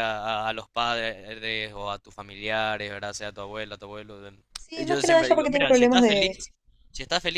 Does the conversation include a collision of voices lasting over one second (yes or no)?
yes